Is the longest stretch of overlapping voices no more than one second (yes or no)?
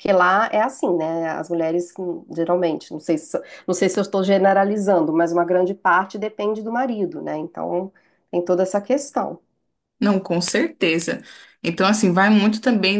yes